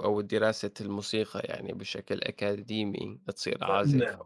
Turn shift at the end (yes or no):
yes